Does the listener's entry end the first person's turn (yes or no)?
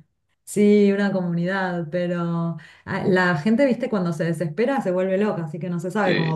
no